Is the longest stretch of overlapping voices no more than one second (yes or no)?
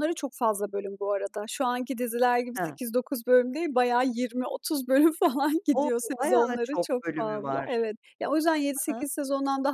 no